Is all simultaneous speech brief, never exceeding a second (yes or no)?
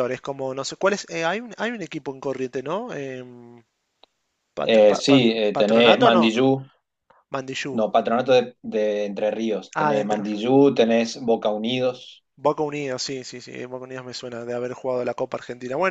no